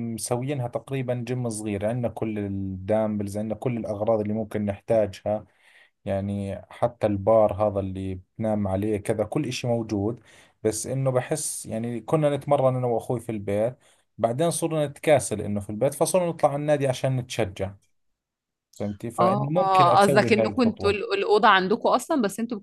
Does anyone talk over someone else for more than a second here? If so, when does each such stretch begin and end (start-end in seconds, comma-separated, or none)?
19.2-21.0